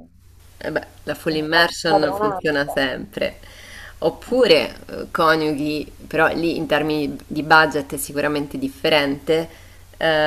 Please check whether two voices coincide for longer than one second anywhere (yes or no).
yes